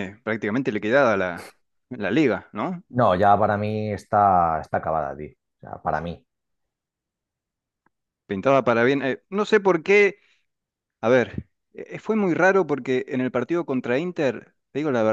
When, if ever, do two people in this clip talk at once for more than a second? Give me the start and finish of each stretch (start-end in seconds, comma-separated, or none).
none